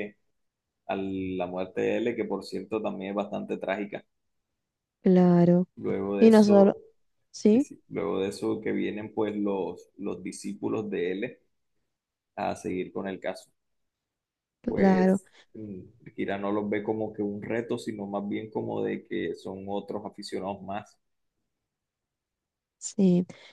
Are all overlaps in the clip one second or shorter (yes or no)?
yes